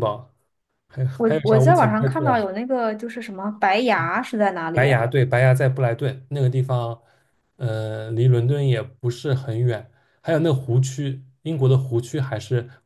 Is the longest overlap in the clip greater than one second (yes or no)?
yes